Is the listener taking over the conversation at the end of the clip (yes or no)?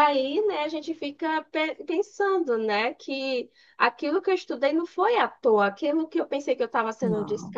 no